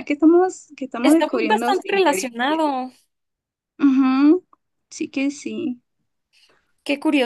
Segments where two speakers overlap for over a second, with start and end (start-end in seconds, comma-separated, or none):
1.0-2.7